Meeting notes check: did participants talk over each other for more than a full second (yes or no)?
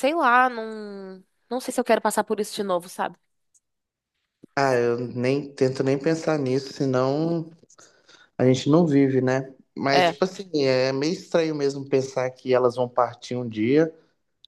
no